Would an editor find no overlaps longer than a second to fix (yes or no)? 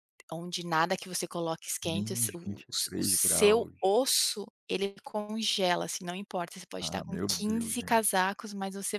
no